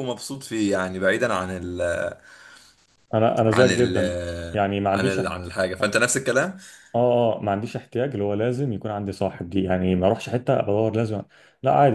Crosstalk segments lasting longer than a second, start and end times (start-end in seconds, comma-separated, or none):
none